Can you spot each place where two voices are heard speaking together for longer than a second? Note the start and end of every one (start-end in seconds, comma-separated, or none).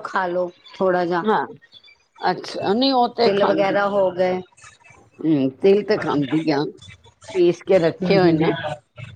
none